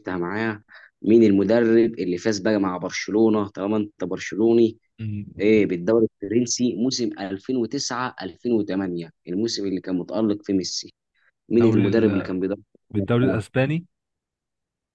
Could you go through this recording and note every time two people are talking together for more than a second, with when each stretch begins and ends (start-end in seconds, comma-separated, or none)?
none